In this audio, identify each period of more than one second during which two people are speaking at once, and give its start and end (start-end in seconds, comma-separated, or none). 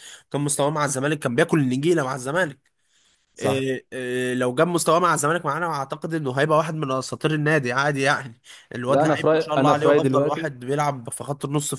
8.9-10.6